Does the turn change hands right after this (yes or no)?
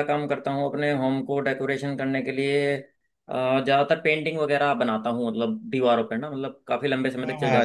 yes